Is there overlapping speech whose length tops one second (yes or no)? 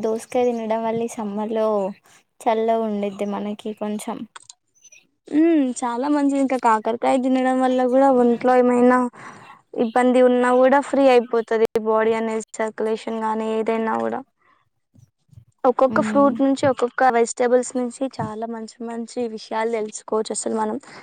no